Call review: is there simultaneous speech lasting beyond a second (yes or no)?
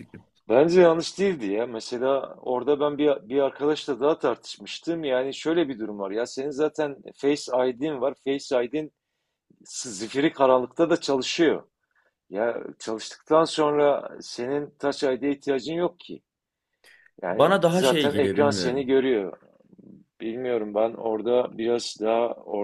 yes